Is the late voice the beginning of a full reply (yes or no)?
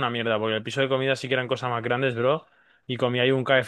no